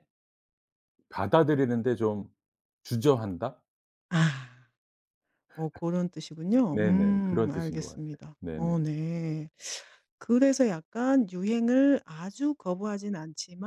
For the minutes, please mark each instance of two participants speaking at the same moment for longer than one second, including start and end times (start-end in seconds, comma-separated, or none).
6.7-8.7